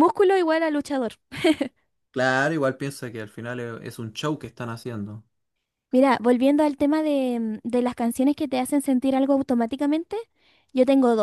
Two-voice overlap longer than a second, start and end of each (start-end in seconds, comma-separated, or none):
none